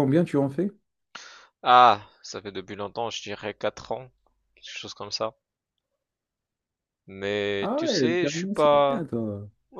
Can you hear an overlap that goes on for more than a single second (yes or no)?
yes